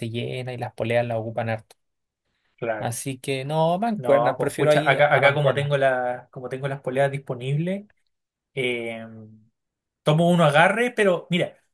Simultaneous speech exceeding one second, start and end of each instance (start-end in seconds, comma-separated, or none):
4.0-5.7